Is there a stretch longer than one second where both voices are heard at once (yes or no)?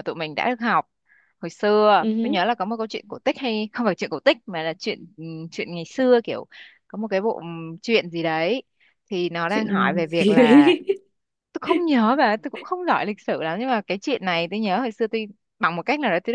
yes